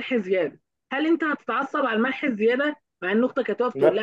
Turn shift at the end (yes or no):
no